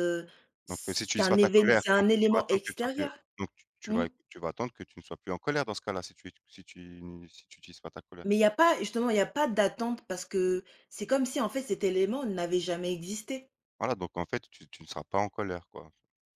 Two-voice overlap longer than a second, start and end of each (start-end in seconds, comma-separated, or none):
0.7-3.1